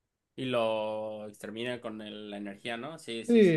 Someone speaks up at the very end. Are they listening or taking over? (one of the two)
taking over